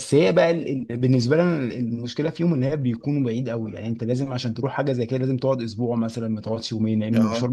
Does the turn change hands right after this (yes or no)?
yes